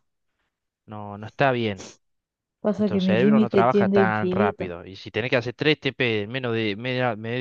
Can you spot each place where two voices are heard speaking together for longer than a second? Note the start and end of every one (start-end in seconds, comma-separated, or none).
2.8-4.6